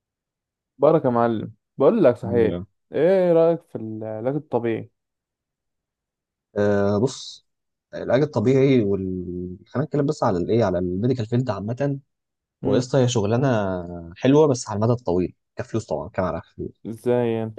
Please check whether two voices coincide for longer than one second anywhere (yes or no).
no